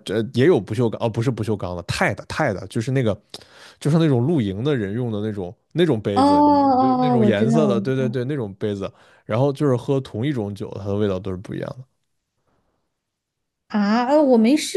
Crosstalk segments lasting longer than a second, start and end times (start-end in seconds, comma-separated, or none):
6.1-8.2